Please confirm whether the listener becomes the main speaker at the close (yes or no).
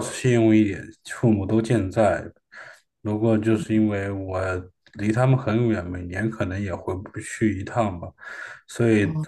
no